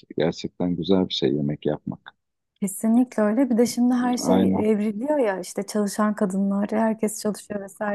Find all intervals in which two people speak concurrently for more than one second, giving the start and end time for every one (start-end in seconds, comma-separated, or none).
none